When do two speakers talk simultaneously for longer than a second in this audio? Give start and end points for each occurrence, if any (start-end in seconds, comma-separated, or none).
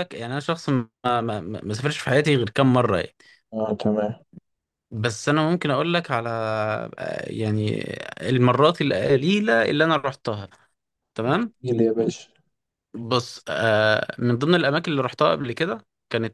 none